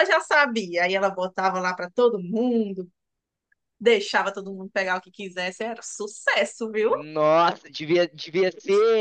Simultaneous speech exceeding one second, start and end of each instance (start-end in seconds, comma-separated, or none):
none